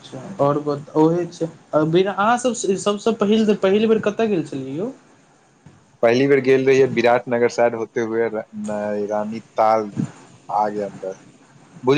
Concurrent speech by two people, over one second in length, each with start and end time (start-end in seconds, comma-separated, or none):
none